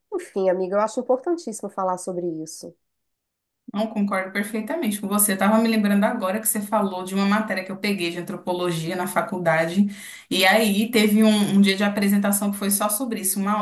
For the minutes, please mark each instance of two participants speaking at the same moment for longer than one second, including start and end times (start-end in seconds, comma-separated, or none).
none